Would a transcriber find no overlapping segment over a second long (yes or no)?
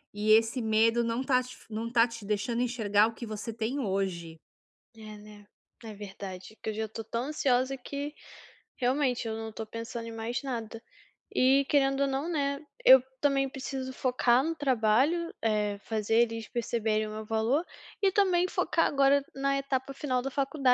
yes